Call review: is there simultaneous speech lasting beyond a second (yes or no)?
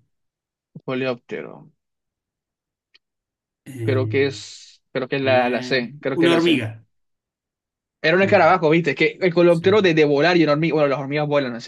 yes